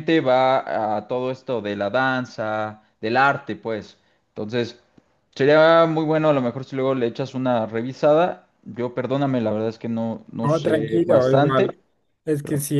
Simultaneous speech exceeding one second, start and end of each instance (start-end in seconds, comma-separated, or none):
10.4-11.8